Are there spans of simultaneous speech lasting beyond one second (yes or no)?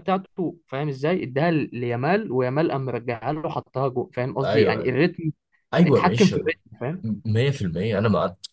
no